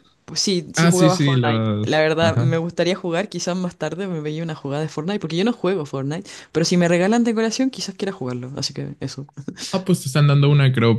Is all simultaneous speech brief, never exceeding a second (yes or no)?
no